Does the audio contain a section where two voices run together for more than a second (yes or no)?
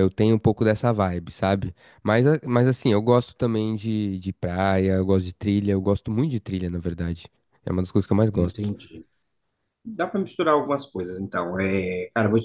no